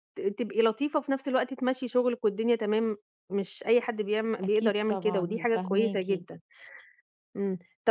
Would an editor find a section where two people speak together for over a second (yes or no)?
yes